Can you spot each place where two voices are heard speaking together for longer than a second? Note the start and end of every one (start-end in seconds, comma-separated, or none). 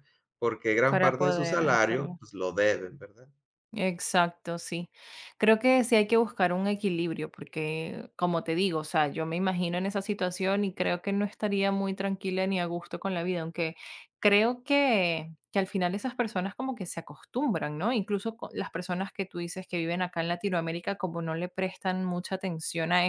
0.9-2.2